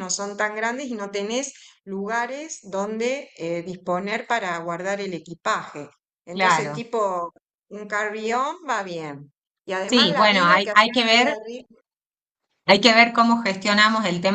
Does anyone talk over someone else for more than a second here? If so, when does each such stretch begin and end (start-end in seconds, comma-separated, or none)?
9.9-11.4